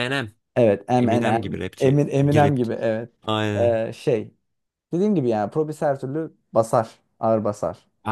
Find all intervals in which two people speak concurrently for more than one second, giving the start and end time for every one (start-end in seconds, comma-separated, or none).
0.9-2.6